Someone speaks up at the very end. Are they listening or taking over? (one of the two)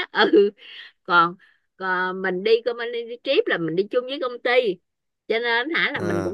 listening